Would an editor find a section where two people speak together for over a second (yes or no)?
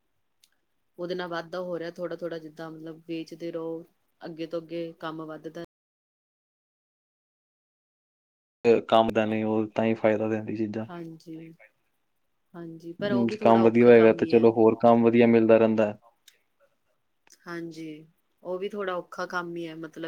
yes